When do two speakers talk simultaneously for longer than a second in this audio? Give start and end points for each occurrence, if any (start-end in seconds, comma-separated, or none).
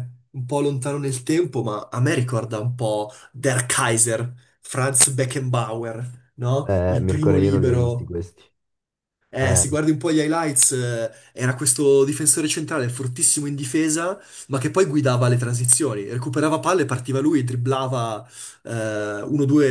6.6-8.1